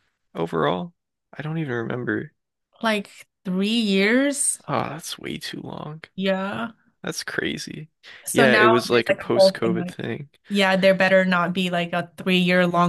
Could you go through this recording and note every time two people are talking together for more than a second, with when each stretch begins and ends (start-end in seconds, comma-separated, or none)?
8.3-10.0